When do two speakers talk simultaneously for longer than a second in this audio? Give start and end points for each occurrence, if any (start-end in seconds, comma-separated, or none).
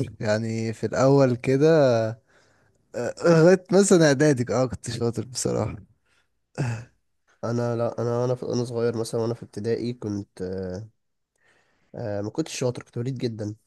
none